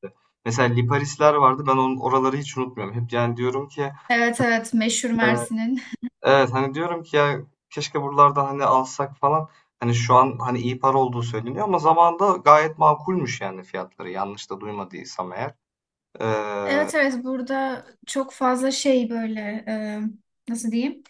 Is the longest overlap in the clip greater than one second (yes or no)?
no